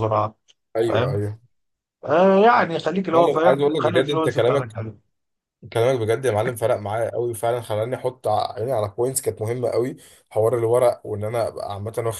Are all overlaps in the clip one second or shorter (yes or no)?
no